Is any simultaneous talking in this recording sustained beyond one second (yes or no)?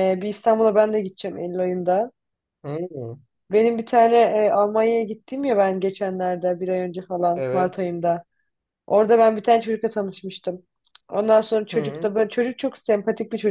no